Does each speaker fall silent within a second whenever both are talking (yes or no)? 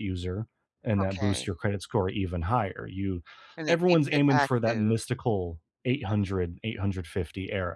no